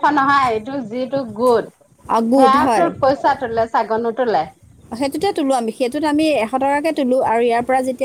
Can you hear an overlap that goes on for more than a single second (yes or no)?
no